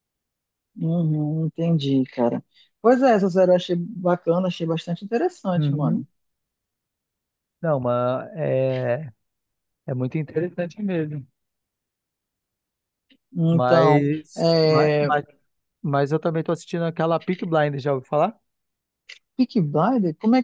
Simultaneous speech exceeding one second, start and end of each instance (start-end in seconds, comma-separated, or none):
13.5-15.1